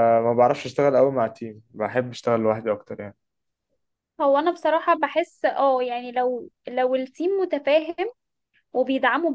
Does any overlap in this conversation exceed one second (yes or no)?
no